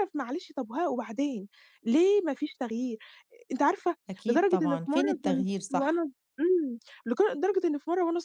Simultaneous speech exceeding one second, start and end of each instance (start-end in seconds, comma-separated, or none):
4.1-6.1